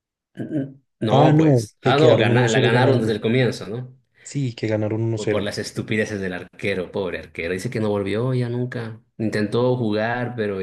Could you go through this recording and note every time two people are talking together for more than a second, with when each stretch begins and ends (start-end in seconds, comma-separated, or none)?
1.1-3.1